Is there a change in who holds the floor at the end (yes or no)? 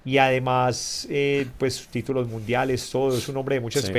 no